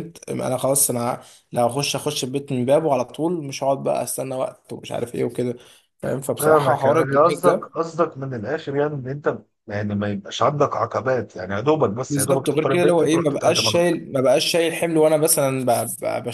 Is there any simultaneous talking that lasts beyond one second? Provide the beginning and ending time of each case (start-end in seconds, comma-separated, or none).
6.4-7.8, 12.1-13.8